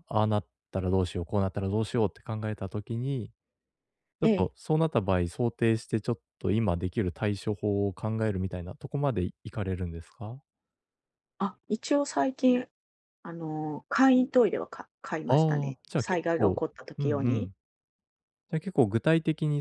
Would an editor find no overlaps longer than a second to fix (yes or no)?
no